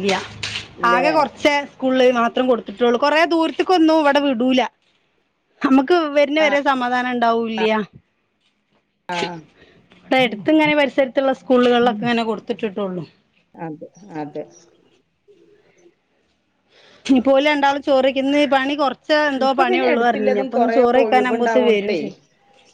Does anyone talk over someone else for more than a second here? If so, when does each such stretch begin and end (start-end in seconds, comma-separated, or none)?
19.4-22.0